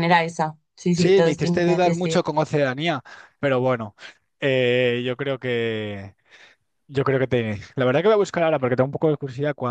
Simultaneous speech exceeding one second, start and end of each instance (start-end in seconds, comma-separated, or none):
0.9-2.4